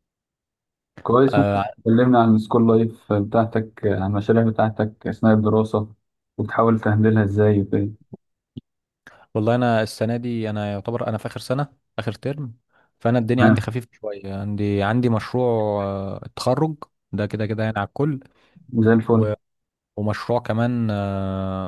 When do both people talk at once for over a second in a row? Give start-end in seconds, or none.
none